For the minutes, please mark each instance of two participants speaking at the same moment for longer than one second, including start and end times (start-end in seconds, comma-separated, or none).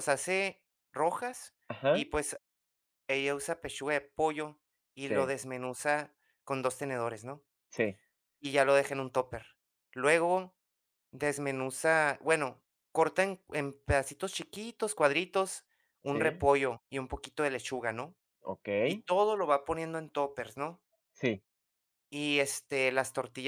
none